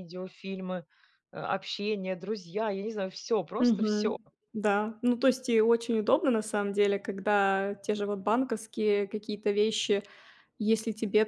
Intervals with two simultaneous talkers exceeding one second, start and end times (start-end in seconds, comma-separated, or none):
none